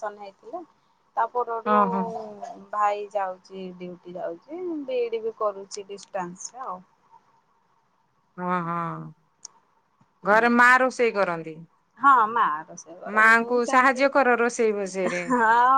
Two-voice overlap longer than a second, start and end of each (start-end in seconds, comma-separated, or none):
13.2-15.2